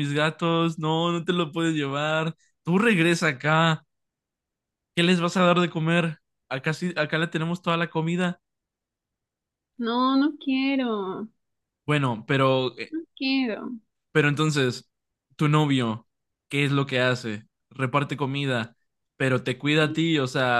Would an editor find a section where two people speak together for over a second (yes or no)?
no